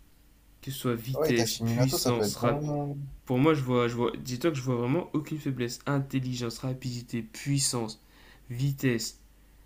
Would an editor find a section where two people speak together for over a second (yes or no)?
yes